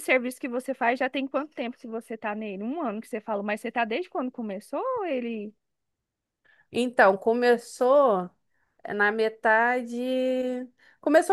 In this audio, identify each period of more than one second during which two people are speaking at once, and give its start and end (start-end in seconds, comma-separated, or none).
none